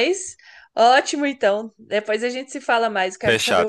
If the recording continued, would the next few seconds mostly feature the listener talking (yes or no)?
yes